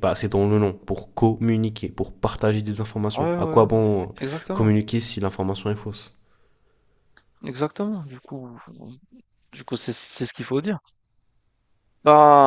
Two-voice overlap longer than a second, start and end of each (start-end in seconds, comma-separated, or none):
none